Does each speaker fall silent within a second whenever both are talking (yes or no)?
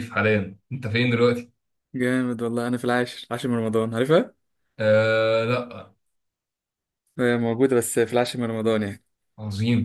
yes